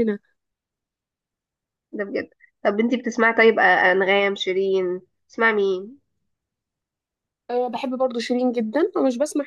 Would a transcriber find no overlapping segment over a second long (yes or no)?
yes